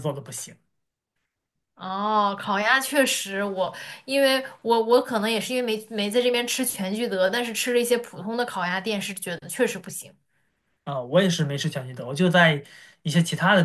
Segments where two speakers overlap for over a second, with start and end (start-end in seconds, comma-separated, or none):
none